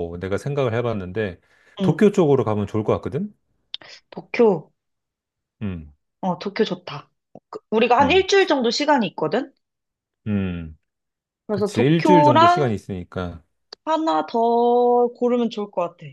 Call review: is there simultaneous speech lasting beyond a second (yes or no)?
yes